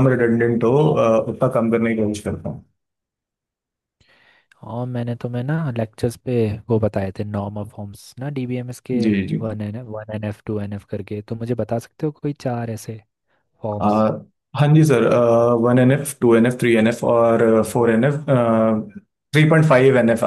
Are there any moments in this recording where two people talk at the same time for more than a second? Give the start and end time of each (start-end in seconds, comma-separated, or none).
none